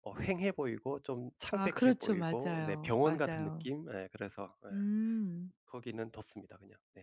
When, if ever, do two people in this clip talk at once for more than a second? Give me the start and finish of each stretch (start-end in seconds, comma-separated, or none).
1.5-3.7